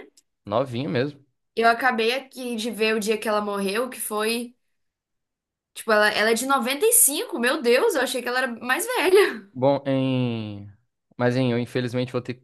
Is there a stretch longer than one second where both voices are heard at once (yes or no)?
no